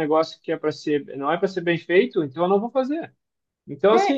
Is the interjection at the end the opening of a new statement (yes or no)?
no